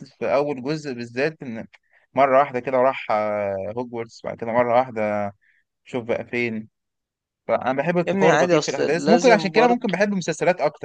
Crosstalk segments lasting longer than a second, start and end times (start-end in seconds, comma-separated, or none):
8.1-9.9